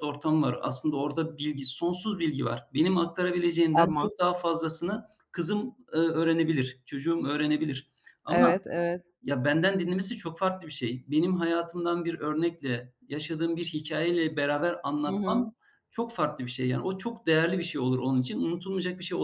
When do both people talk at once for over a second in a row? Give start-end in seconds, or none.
none